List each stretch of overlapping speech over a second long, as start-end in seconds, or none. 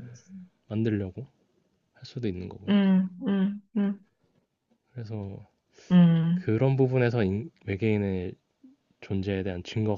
none